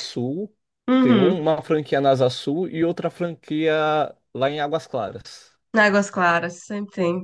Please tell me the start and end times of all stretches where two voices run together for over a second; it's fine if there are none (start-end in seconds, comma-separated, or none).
none